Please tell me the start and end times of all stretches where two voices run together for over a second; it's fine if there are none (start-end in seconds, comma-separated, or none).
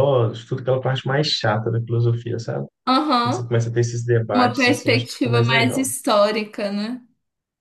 4.3-5.9